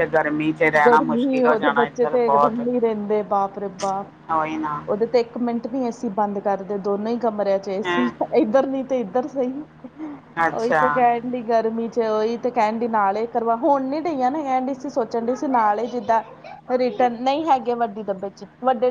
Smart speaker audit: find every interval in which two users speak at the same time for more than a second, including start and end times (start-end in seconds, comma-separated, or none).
0.9-2.7